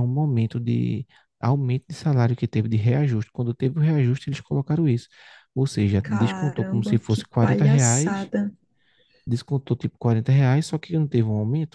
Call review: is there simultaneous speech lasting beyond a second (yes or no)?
yes